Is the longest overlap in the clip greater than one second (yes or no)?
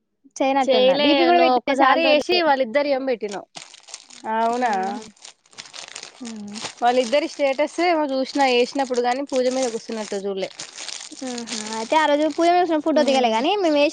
yes